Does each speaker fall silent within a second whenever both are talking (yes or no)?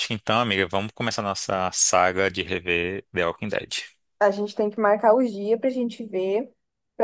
yes